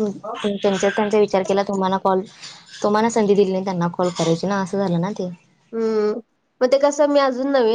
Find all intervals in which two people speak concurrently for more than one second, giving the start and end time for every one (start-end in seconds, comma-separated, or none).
none